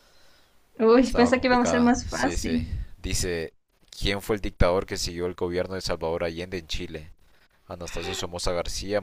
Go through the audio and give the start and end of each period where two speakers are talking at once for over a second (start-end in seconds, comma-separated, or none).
1.0-2.6